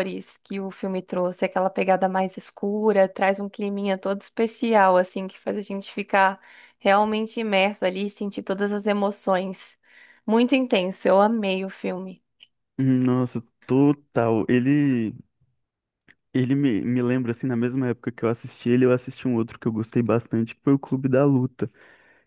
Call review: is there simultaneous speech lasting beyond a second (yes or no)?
no